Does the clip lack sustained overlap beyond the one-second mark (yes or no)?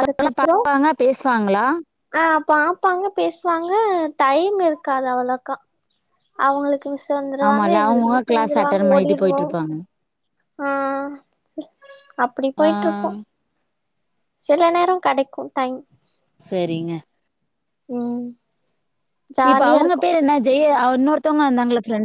no